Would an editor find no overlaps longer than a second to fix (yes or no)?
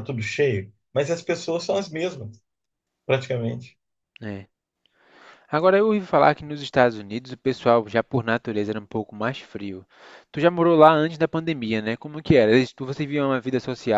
yes